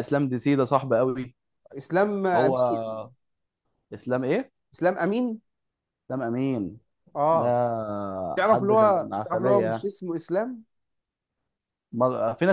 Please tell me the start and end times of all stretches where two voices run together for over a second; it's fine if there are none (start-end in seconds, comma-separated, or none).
8.4-9.9